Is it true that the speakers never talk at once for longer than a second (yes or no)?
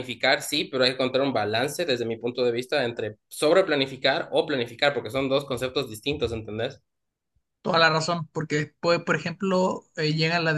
yes